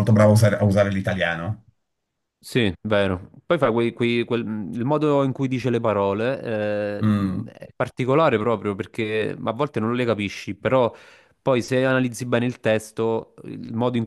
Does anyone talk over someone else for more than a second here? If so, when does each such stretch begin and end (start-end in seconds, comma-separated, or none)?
none